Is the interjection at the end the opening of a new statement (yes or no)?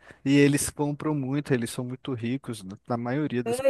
yes